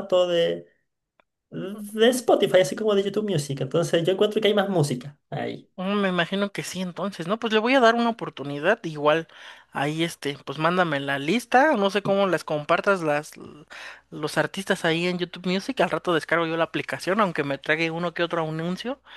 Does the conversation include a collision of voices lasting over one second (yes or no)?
no